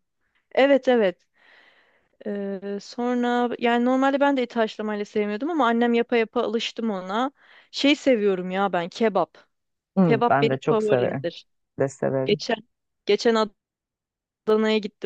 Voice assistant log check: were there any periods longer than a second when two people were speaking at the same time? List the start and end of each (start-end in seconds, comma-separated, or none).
10.0-11.3